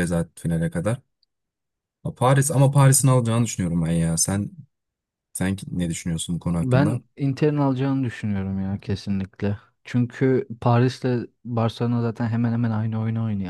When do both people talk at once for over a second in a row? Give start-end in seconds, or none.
none